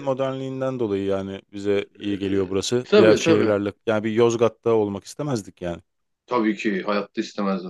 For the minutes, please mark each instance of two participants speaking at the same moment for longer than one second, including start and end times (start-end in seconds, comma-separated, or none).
2.0-3.6